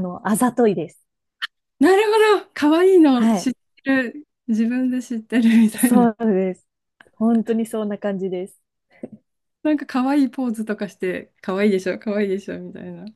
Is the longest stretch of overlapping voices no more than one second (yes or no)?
yes